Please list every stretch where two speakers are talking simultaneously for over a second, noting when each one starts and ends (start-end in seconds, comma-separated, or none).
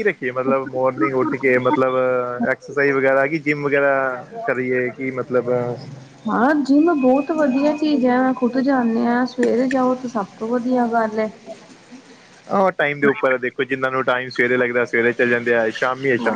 none